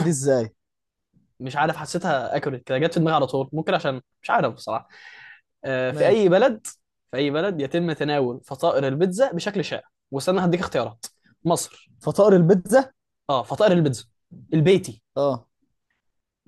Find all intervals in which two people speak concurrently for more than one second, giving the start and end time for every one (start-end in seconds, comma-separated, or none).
none